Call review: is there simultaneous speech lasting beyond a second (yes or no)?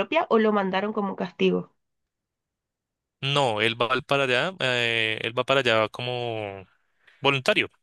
no